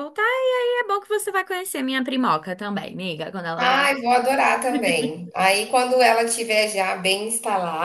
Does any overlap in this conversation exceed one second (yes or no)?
no